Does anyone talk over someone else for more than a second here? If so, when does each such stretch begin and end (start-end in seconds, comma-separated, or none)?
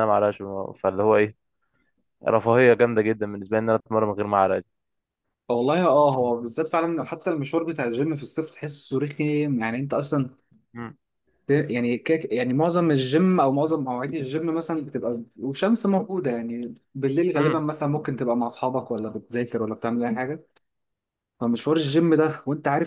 none